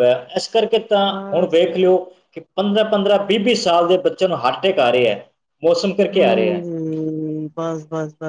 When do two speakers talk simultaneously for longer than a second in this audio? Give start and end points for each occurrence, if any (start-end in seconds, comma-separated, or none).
none